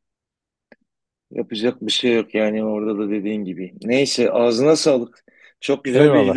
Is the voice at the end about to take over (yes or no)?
no